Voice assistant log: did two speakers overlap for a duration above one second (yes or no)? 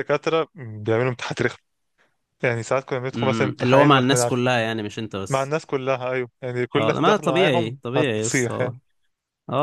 yes